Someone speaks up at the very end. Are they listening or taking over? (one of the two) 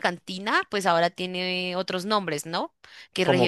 listening